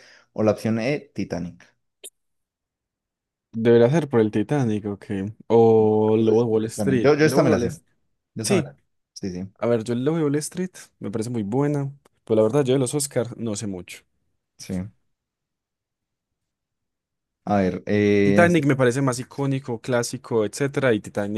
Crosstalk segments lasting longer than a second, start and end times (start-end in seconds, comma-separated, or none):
6.1-7.7